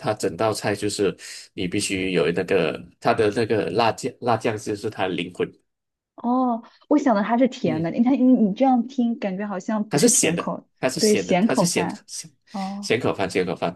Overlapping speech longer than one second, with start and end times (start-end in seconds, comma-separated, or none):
9.9-12.1